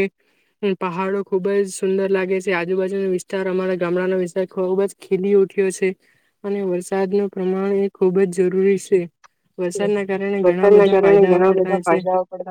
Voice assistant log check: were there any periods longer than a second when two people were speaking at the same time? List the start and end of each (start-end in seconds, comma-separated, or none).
10.4-12.0